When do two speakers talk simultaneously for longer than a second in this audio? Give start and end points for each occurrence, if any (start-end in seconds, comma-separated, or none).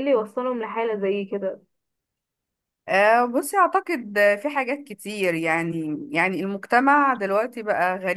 none